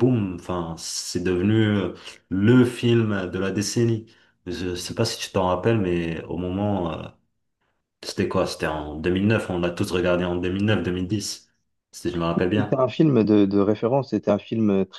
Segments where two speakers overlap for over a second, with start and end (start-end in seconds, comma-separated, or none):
none